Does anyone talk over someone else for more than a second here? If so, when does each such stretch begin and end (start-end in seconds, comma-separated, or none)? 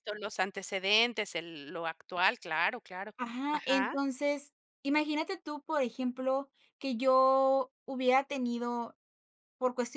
none